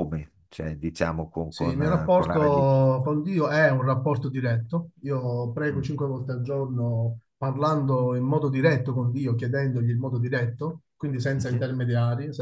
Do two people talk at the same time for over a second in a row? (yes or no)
yes